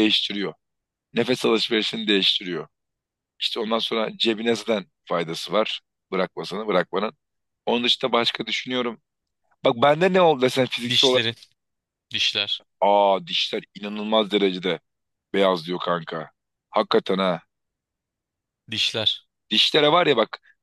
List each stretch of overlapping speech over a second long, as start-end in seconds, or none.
none